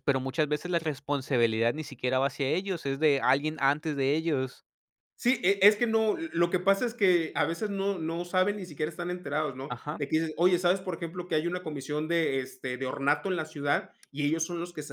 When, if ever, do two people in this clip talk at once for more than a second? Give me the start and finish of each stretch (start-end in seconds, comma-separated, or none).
none